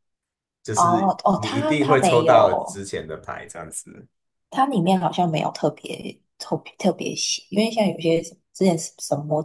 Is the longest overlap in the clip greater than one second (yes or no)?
yes